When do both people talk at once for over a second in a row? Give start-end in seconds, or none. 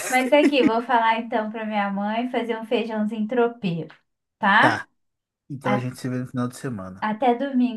none